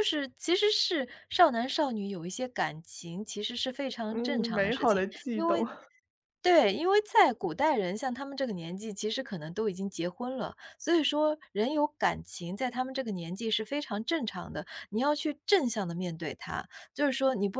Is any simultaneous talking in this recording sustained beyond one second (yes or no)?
yes